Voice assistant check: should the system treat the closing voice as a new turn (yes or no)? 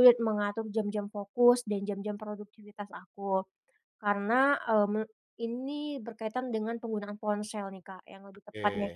no